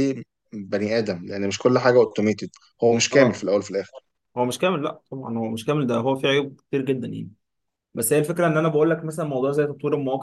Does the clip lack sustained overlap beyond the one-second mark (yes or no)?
yes